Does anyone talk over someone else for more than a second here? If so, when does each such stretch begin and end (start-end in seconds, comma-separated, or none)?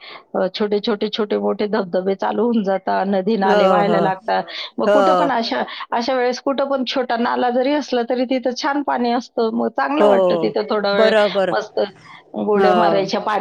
none